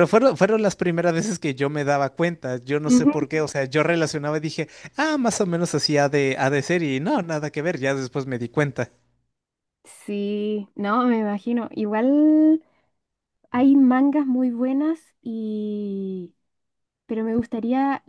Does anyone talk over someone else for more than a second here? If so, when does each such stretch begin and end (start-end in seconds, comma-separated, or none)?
none